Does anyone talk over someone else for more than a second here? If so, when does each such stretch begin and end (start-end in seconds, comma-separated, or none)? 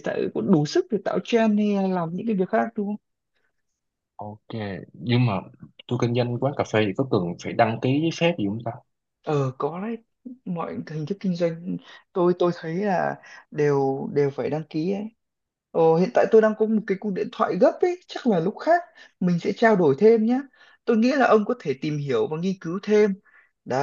none